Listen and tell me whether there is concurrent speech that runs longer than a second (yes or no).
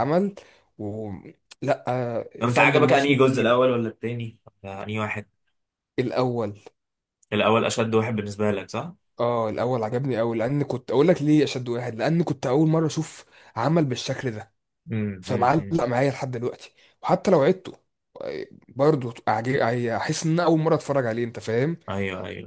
yes